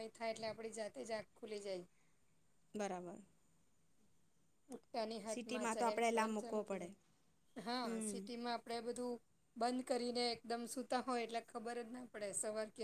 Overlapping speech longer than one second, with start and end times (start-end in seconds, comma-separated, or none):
5.3-6.9